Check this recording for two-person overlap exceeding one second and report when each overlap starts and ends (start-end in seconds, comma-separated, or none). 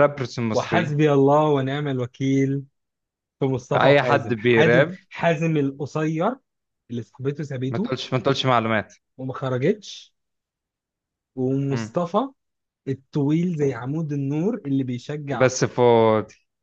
3.7-5.0